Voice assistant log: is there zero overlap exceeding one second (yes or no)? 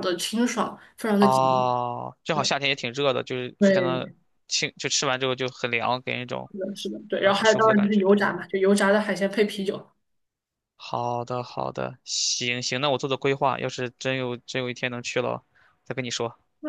no